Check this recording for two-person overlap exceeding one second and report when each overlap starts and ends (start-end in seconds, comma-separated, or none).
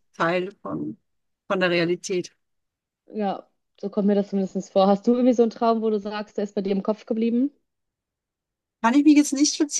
none